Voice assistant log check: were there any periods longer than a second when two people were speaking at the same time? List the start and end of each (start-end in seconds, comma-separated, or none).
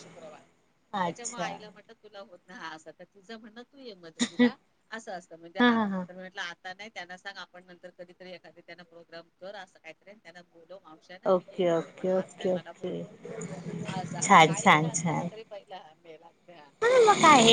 11.3-13.0